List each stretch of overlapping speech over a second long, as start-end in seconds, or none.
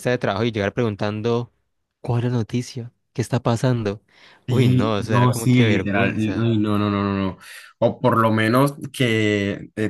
4.5-6.5